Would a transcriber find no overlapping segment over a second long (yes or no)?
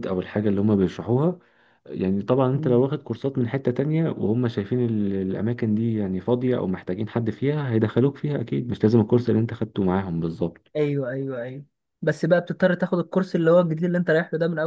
yes